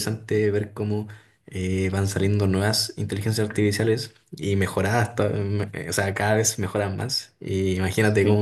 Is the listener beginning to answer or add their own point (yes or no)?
no